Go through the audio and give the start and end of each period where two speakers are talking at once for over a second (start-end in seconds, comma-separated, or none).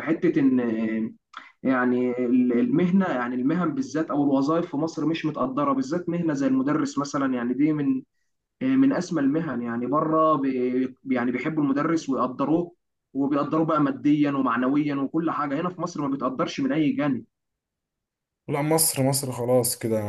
none